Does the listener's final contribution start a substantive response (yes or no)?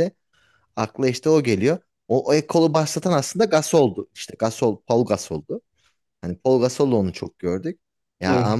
no